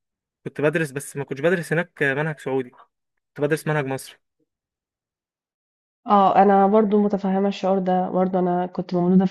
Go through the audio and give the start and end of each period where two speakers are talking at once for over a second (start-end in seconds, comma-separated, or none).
none